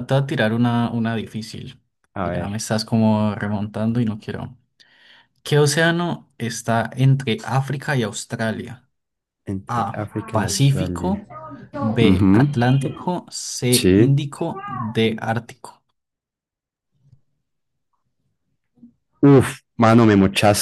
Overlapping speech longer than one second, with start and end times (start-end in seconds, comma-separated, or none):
9.7-11.2